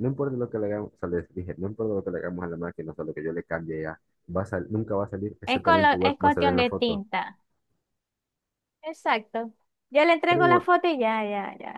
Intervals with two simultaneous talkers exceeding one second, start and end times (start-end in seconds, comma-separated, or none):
5.5-7.0